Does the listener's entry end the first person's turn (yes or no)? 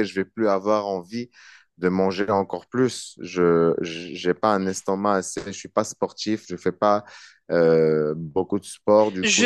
yes